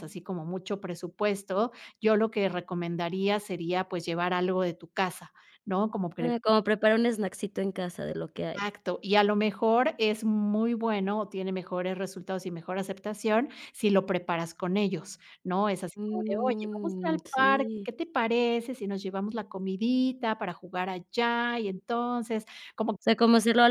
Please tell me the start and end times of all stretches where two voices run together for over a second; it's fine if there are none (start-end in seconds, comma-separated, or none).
16.0-17.9